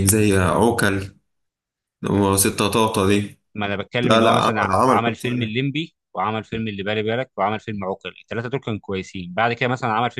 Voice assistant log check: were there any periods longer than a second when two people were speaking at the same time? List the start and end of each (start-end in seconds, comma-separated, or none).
4.0-5.5